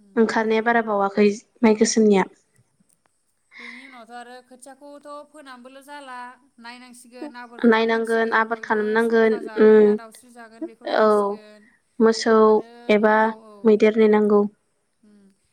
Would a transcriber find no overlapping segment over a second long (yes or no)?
no